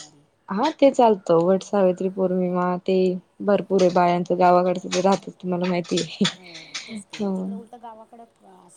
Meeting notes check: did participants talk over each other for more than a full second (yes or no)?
no